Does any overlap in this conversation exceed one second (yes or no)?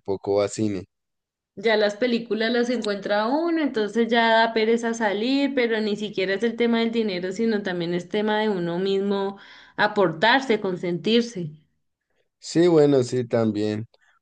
no